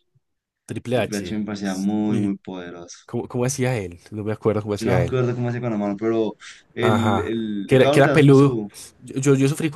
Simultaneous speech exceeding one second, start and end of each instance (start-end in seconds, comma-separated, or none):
0.9-2.4, 6.8-8.6